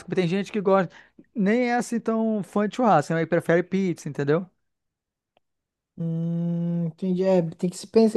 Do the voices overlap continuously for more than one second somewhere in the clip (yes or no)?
no